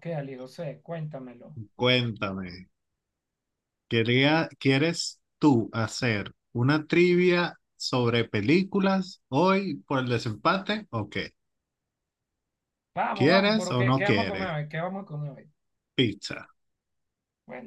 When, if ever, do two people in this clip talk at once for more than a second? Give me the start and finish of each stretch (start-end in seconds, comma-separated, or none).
13.1-14.5